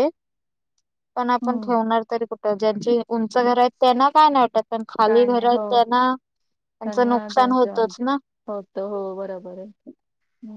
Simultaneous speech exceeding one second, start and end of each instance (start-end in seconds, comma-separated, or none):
none